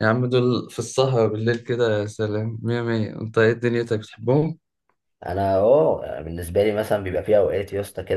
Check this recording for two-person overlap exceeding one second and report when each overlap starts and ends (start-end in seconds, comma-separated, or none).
none